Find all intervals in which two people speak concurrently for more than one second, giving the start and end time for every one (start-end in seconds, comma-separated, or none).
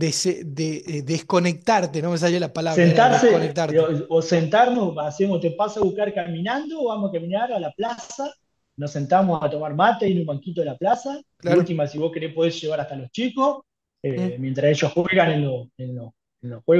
2.6-3.9